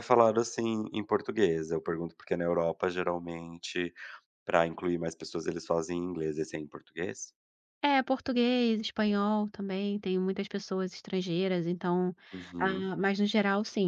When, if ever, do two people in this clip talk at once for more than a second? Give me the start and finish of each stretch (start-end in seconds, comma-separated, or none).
none